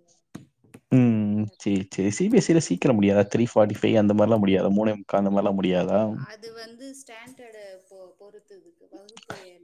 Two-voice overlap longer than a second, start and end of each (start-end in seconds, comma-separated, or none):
none